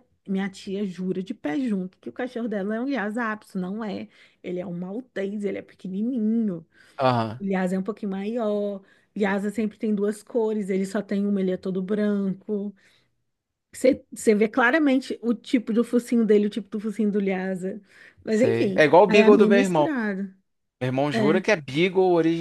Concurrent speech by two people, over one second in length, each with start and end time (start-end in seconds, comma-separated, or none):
18.3-19.9